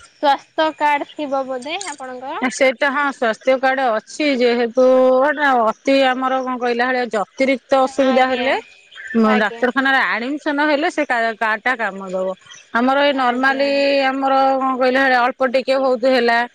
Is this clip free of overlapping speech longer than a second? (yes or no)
yes